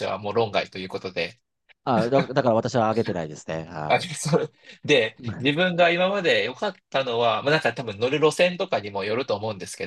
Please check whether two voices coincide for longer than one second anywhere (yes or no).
no